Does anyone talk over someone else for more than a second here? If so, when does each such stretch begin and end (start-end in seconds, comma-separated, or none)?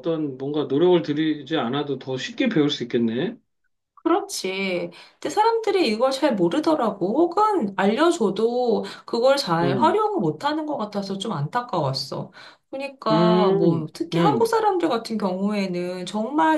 13.1-14.5